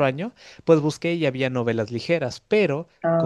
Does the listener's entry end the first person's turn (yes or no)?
no